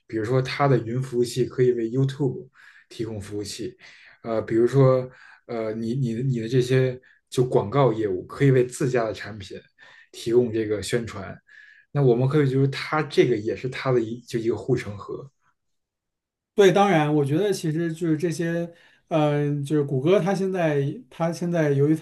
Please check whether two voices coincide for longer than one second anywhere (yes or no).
no